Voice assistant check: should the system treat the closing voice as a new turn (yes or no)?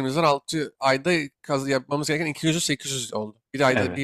no